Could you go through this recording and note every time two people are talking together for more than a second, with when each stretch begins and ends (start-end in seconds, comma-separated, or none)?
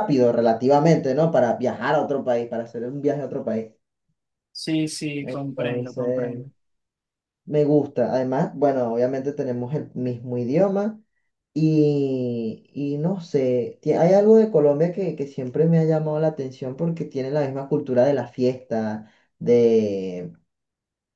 5.2-6.5